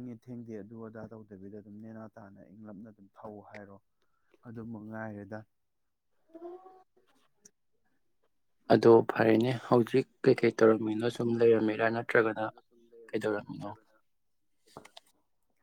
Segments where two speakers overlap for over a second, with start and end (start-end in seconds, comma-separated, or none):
10.3-12.4